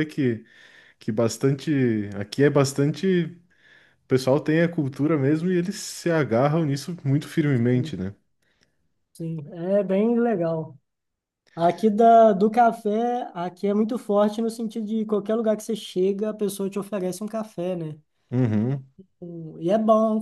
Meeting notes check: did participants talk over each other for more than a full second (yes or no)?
no